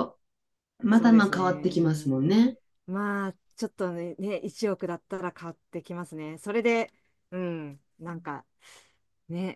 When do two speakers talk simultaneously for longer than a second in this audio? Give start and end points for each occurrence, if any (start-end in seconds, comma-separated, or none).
0.9-2.2